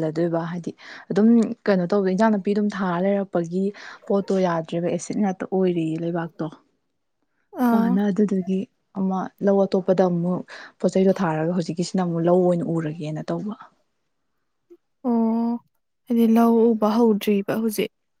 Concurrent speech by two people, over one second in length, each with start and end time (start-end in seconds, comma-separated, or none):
none